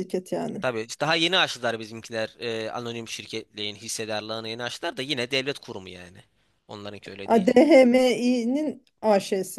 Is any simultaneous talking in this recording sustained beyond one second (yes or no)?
no